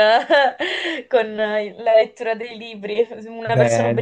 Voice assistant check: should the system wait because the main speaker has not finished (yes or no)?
yes